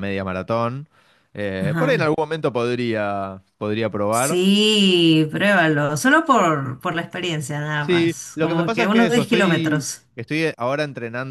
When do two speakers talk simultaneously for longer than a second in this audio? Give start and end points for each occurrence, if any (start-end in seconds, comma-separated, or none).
7.8-10.1